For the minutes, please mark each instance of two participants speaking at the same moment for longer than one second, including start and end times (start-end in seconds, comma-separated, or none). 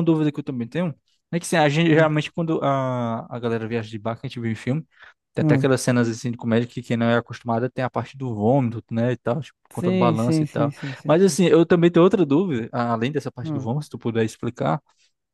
9.7-11.4